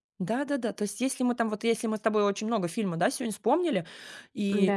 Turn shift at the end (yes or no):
no